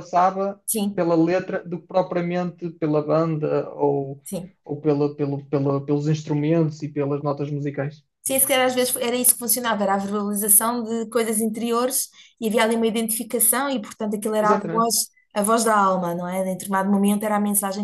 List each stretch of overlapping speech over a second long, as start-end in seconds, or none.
none